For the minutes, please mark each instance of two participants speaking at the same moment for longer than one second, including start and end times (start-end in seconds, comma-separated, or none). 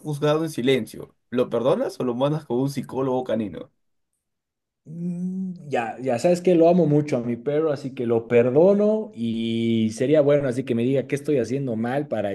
none